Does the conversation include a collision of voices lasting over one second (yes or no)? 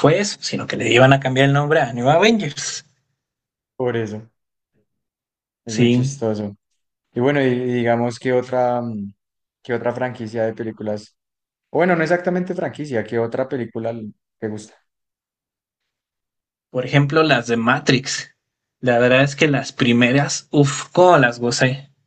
no